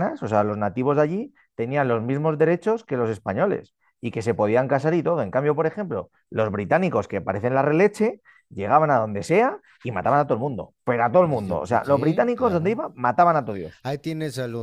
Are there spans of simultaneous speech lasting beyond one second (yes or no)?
yes